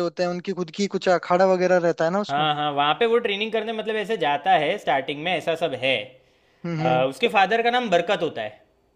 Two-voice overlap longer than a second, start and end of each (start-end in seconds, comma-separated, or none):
none